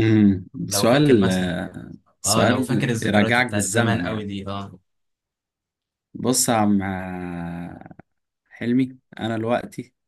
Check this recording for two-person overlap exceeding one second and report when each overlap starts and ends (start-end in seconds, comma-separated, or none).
2.2-4.3